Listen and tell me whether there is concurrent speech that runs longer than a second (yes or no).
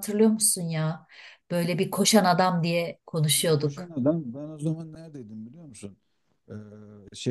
no